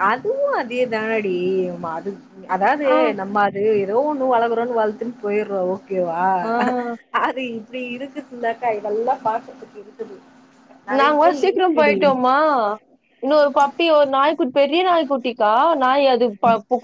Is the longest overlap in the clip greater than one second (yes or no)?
no